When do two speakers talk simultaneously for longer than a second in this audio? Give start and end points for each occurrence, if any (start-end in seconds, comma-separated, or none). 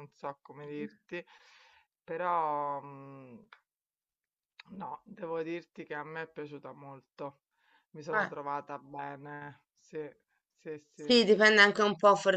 none